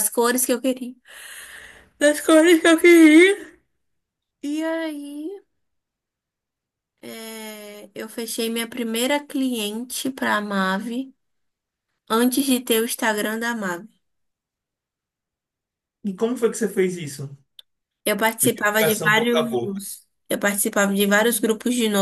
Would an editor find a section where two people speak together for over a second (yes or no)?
yes